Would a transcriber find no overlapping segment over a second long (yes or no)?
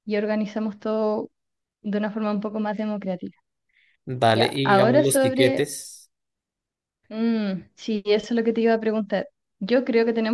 no